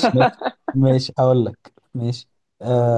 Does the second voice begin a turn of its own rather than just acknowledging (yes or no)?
no